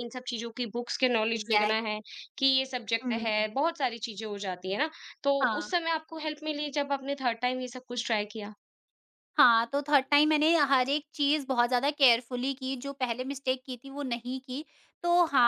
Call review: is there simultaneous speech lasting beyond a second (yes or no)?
no